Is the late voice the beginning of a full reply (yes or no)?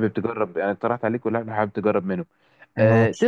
no